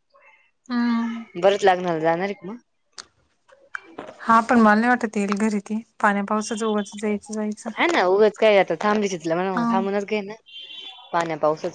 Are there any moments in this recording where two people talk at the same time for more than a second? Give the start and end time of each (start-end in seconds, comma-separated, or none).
none